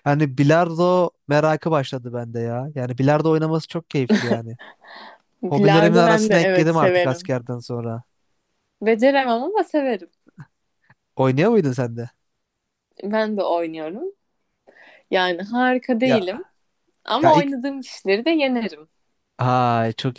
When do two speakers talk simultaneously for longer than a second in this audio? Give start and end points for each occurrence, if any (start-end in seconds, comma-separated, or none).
5.5-7.3